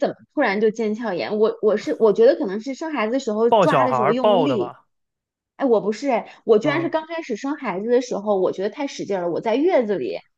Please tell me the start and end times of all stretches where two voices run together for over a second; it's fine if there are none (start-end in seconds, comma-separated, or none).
3.5-4.7